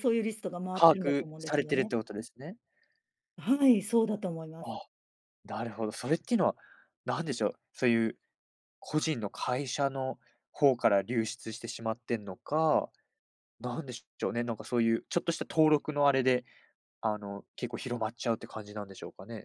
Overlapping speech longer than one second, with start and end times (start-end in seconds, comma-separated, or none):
0.7-1.9